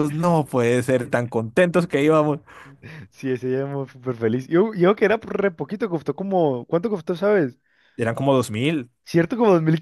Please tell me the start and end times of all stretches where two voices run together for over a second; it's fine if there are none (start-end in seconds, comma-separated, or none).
none